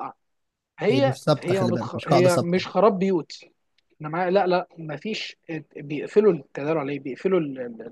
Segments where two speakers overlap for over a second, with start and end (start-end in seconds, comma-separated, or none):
0.9-2.7